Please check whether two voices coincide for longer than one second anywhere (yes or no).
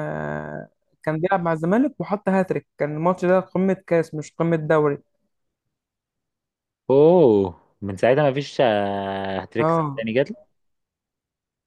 no